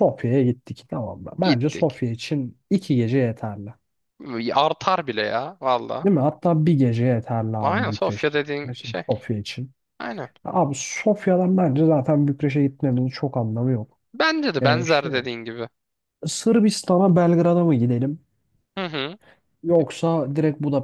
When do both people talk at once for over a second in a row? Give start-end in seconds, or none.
7.6-9.0